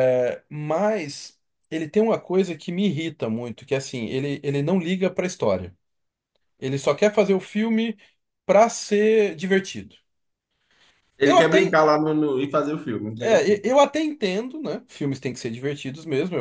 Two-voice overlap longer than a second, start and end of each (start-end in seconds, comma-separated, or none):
none